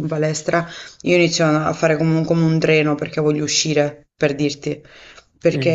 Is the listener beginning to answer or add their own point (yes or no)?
no